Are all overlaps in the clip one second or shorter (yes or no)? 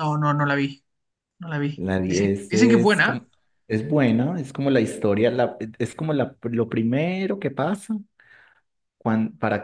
no